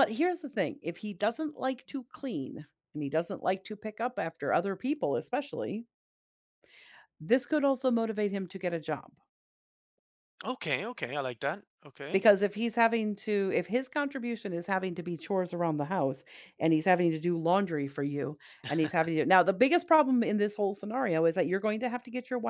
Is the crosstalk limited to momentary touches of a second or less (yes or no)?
yes